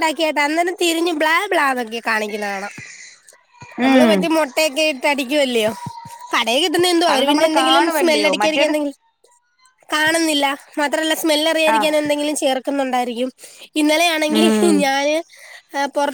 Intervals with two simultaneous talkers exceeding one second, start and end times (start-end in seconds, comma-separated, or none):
7.1-8.8